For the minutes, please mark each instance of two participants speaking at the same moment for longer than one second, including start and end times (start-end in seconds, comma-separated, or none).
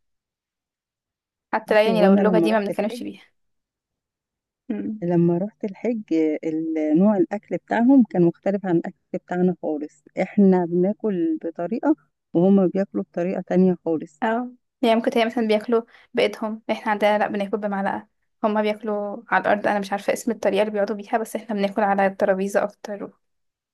1.7-3.1